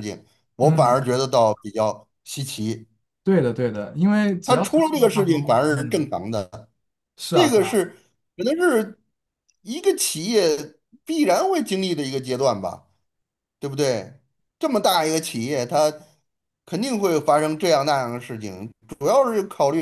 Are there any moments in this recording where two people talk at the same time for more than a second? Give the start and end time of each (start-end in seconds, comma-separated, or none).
4.4-6.1